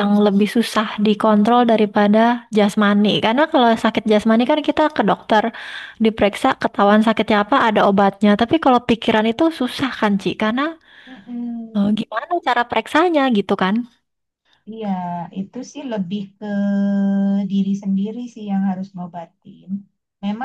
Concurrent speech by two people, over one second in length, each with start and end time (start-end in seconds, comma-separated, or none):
none